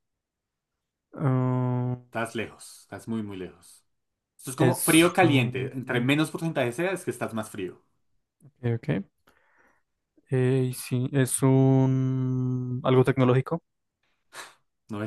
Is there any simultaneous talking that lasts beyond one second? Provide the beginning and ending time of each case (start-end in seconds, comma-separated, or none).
4.5-6.2